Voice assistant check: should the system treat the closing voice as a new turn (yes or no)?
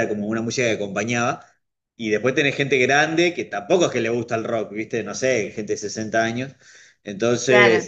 no